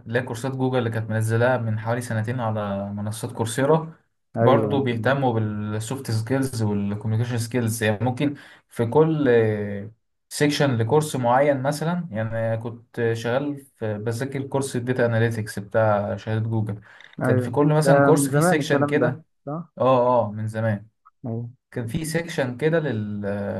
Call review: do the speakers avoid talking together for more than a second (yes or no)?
no